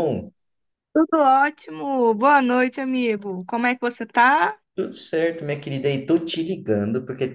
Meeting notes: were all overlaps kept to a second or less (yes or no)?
yes